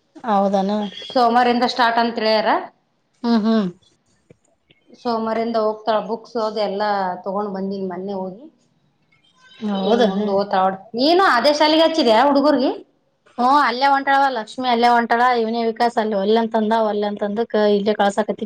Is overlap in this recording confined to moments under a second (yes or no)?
yes